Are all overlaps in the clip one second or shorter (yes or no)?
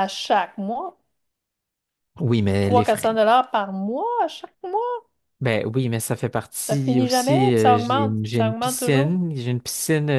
no